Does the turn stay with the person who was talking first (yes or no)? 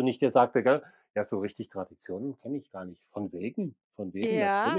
no